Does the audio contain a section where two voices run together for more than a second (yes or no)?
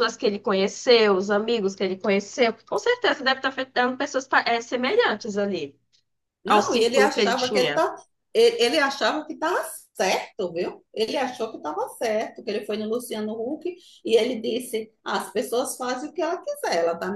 yes